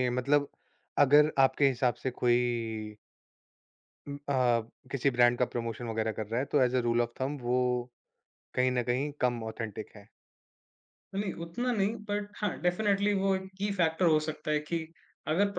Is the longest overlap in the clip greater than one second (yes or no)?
no